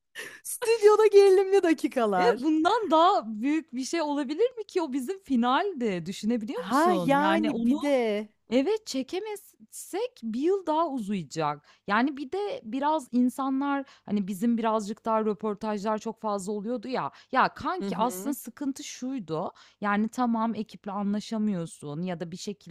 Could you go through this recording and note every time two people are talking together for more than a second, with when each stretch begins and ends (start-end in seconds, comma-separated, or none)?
6.5-7.8